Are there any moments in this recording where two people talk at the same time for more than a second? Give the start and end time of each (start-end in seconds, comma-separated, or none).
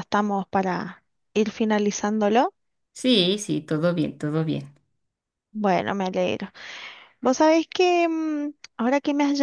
none